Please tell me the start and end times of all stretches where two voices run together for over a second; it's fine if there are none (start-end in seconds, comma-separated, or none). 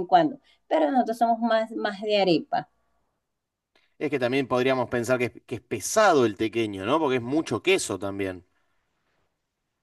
none